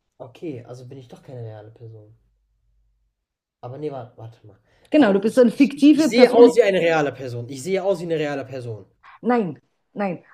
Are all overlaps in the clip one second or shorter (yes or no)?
no